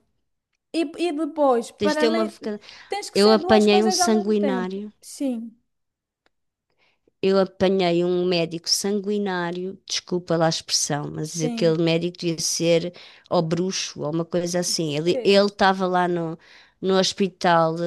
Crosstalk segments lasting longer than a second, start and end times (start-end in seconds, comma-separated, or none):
3.1-4.9